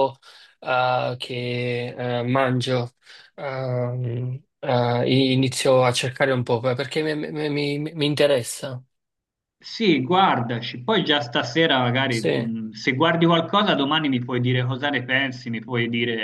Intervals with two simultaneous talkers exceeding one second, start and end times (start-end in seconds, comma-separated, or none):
none